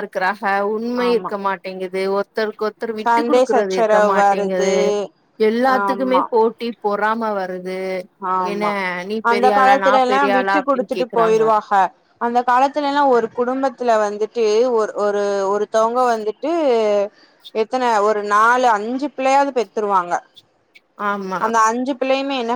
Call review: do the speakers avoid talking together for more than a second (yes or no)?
no